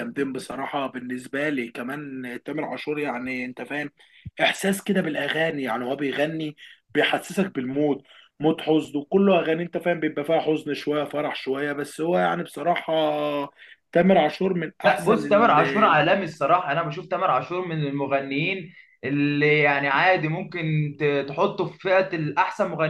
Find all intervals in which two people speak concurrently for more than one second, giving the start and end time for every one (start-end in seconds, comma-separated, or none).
14.8-16.1